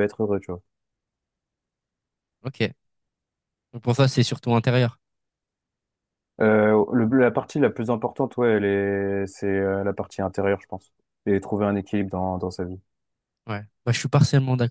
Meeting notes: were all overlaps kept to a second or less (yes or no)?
yes